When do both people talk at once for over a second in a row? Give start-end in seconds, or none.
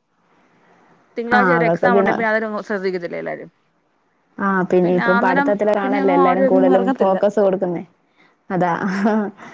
5.2-7.2